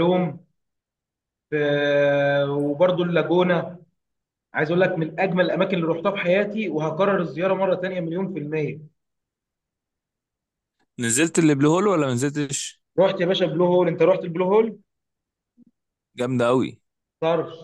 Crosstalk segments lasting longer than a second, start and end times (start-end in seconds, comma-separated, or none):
none